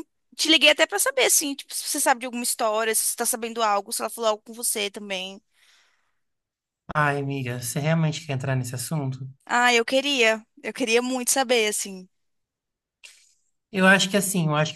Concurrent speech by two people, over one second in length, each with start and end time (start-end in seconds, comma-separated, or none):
none